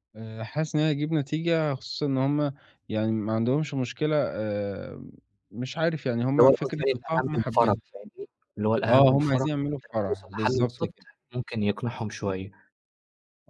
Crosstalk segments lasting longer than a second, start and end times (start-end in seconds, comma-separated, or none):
6.3-7.8, 8.9-10.9